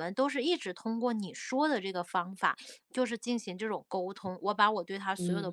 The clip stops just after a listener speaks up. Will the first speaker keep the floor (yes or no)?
yes